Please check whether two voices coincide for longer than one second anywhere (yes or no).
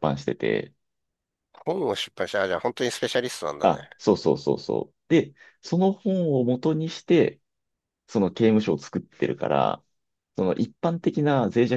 no